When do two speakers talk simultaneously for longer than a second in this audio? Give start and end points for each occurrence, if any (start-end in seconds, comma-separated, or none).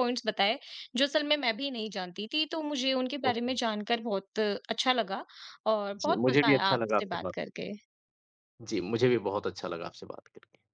6.0-7.5